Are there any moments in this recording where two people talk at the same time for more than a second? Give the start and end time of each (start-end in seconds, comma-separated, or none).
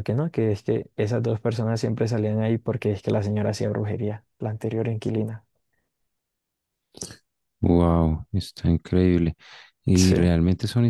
none